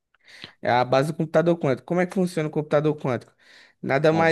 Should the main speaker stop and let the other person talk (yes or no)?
no